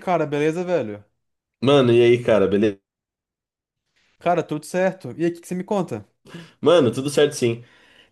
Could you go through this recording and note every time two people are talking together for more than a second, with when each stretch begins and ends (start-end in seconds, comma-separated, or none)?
none